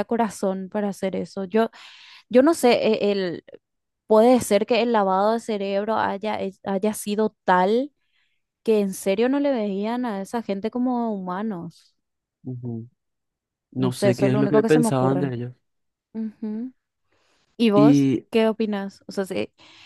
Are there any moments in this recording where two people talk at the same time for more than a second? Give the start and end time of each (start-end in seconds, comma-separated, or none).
13.8-15.3